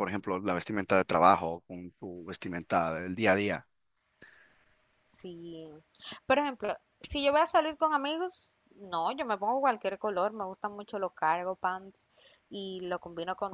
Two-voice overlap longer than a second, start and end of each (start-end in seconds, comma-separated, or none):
none